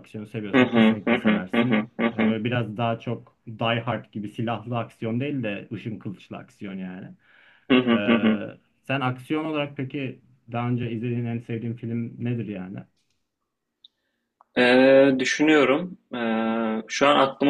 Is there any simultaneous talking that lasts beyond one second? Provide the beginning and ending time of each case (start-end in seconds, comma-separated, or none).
0.5-2.3